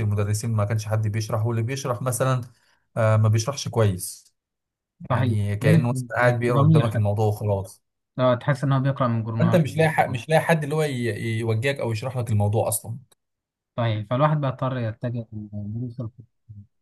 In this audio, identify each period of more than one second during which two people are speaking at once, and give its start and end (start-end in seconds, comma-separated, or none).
5.1-7.2